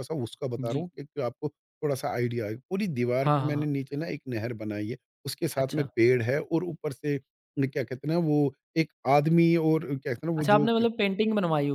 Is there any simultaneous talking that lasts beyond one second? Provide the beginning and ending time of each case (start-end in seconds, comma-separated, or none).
none